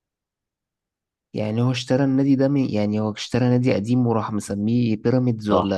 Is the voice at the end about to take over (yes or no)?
yes